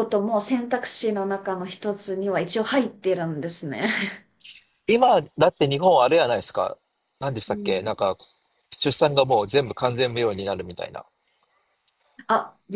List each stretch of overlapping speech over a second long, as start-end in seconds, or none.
none